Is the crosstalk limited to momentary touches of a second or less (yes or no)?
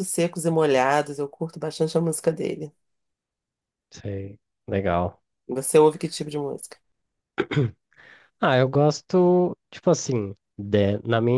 yes